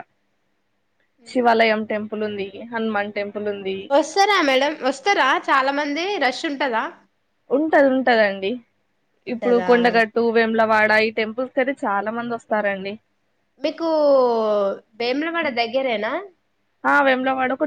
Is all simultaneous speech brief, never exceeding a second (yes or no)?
yes